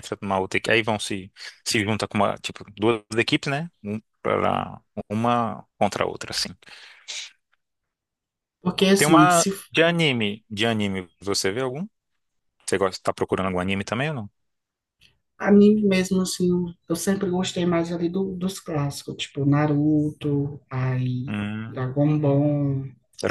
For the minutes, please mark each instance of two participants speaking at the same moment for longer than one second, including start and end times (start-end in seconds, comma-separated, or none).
none